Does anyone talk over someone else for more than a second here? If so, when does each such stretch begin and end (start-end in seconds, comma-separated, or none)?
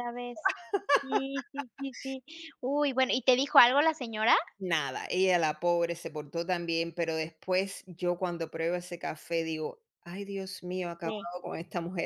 none